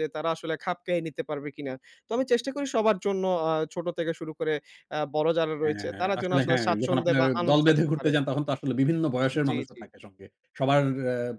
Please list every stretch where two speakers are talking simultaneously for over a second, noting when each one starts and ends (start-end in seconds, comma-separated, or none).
5.6-8.1